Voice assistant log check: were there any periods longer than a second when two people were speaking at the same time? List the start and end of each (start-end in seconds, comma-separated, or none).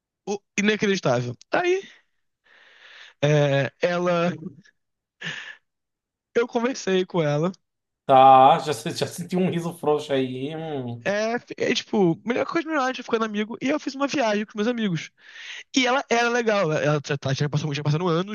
none